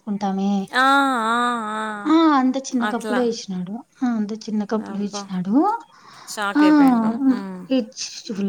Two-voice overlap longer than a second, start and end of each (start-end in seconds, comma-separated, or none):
none